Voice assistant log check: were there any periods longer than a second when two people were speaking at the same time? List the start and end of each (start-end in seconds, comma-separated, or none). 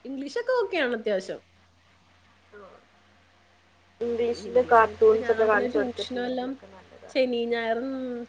4.5-6.5